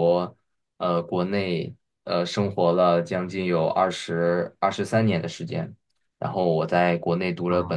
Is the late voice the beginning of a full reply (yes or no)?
no